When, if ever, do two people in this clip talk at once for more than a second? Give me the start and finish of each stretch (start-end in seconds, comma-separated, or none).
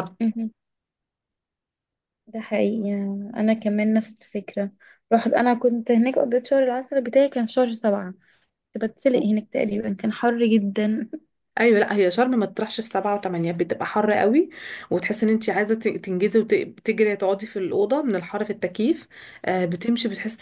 none